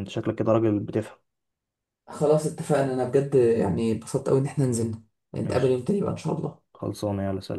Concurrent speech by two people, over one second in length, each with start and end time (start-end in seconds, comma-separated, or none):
none